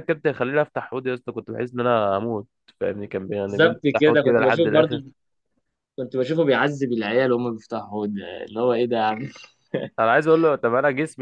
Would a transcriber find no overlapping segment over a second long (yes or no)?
no